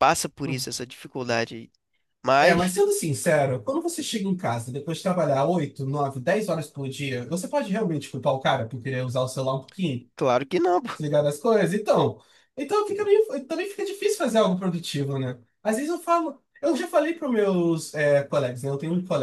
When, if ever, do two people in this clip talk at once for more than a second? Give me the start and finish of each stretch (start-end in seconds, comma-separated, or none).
none